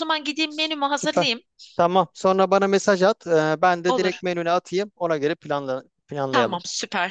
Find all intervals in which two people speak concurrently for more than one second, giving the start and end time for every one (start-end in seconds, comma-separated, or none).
none